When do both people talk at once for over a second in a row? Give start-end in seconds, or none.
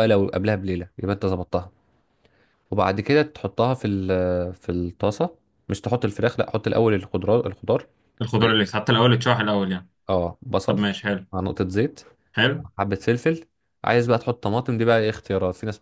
none